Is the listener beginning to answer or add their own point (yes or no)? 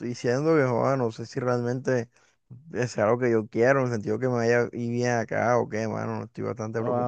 yes